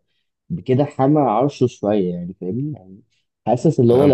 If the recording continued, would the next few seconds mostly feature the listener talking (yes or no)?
no